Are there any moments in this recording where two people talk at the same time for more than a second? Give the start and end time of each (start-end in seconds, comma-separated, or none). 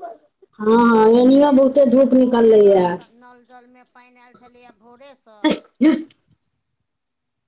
0.7-2.7